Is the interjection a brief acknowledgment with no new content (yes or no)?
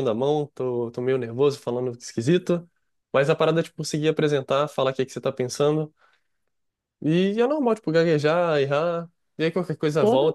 yes